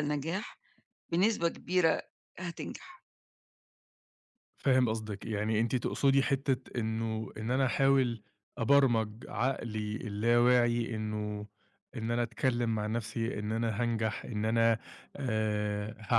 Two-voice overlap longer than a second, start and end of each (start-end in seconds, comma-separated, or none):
none